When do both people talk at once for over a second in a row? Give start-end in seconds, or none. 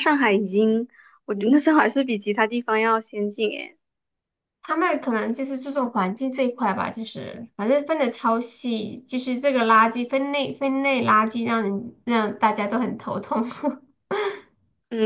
none